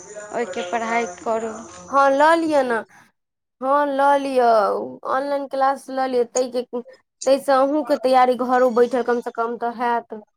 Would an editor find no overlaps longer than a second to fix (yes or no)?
yes